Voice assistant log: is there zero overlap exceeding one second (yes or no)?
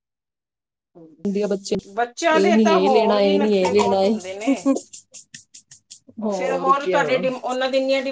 no